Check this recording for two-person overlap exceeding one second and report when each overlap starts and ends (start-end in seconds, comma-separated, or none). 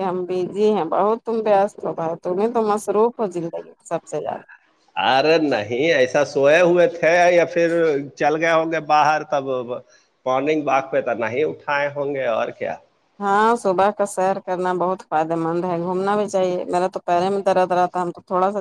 none